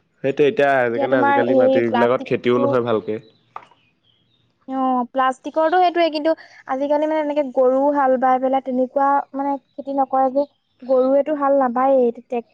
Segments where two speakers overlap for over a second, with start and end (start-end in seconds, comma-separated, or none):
1.1-2.6